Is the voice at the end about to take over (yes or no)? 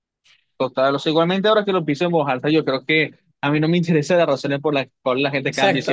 no